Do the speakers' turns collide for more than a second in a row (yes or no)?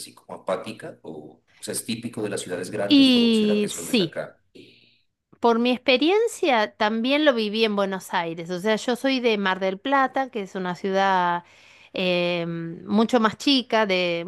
yes